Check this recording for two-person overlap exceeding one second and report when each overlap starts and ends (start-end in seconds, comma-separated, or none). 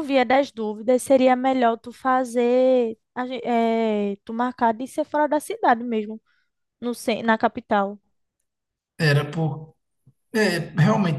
none